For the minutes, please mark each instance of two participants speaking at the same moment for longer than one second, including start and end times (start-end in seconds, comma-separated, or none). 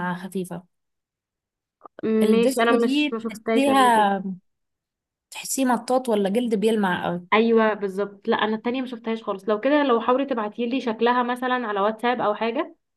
2.2-4.1